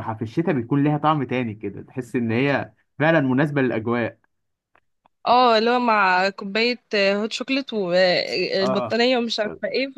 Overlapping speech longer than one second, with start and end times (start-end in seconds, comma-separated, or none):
none